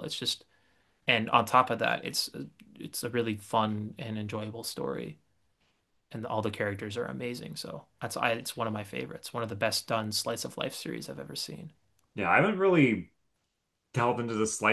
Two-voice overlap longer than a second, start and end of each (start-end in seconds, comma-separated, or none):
none